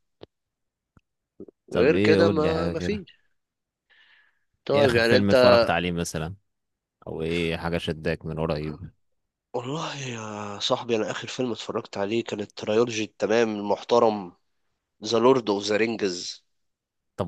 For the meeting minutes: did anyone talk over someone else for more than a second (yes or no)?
yes